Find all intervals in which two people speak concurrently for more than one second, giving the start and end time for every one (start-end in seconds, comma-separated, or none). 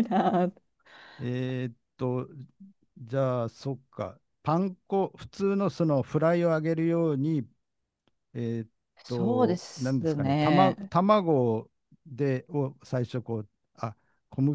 9.1-10.9